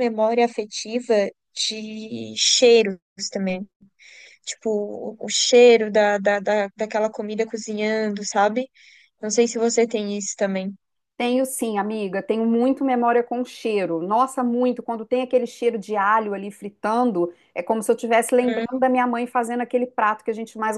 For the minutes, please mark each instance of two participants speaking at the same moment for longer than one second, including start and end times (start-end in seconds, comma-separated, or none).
none